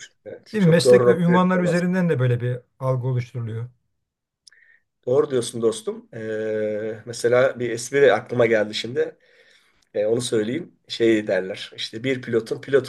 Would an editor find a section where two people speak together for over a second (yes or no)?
yes